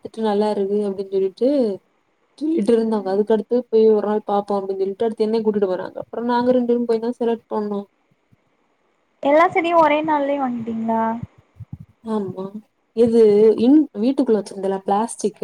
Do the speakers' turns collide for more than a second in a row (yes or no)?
no